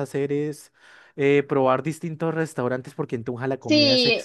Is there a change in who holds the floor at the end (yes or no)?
yes